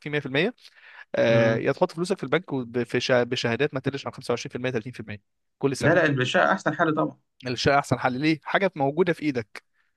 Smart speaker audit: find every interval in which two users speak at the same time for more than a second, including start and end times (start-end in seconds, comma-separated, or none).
none